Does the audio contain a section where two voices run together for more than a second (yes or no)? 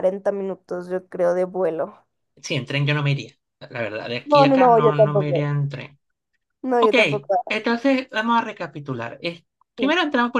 yes